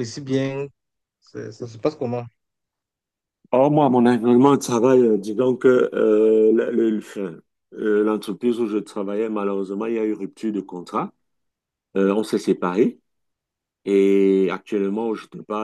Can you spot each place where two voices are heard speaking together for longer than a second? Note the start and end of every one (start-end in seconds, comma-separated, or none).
none